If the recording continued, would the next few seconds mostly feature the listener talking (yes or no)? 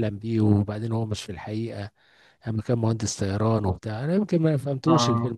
no